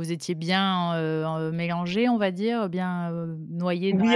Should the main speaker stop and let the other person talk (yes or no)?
yes